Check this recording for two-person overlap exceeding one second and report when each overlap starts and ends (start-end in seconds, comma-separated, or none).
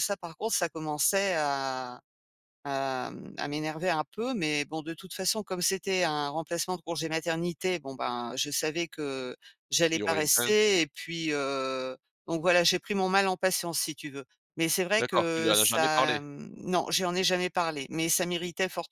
15.0-16.2